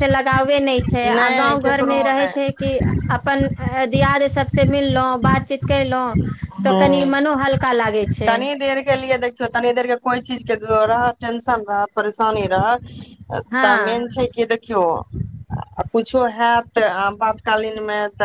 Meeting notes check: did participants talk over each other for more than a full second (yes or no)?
yes